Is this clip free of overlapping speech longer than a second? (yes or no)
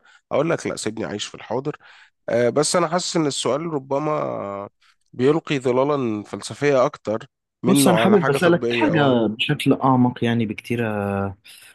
no